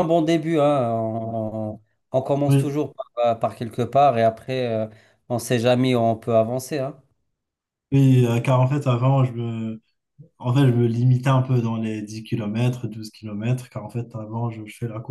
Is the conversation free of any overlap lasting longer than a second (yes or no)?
yes